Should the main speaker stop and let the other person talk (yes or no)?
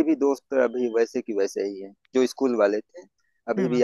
no